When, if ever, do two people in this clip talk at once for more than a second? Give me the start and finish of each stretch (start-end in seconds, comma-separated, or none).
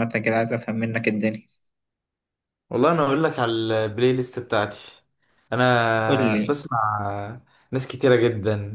none